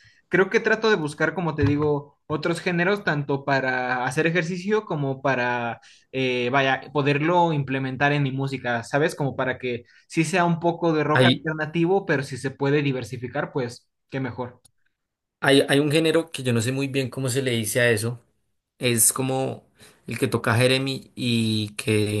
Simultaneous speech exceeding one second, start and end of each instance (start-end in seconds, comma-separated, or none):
none